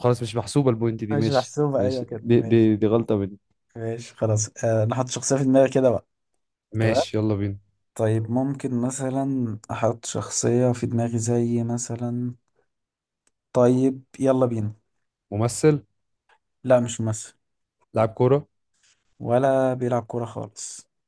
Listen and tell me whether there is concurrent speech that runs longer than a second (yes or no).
yes